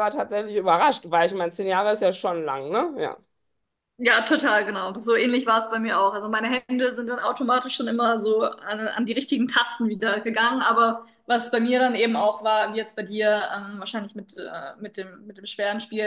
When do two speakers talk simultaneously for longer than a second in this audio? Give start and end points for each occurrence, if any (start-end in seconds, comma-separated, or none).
none